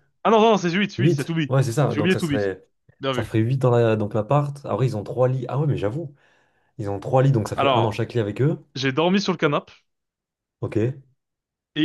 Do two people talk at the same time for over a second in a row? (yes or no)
yes